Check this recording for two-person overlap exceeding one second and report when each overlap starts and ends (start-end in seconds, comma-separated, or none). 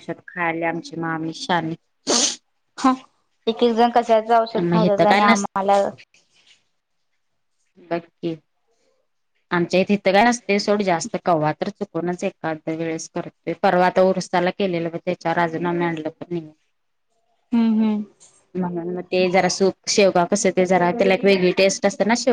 none